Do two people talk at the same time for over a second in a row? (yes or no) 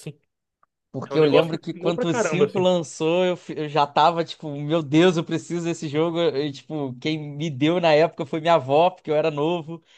yes